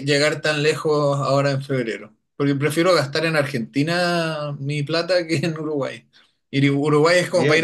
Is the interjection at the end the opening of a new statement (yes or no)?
no